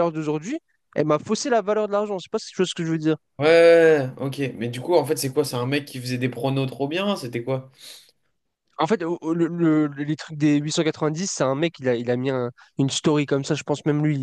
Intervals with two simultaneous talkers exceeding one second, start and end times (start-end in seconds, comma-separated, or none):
none